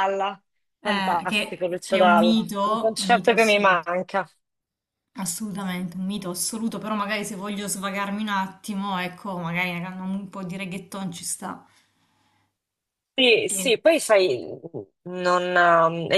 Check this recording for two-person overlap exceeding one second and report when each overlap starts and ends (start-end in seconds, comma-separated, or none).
0.8-3.9